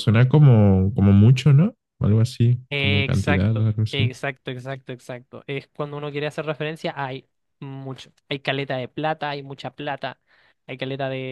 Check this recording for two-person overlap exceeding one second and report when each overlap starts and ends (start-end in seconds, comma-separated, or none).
2.7-4.0